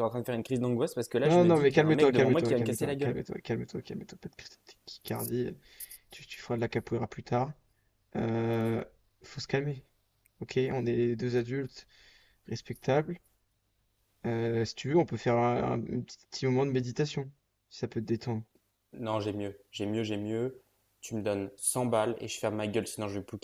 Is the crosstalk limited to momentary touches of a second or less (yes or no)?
no